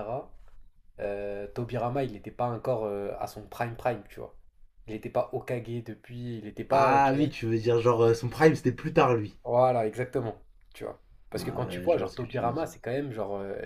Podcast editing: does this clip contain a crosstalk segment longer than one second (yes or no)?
yes